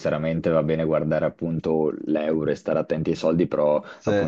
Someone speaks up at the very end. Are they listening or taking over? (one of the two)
listening